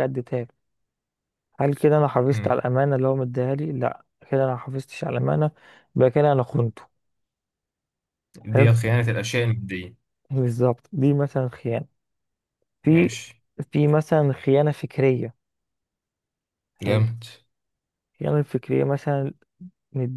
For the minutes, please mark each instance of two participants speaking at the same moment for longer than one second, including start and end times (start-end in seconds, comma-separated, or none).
none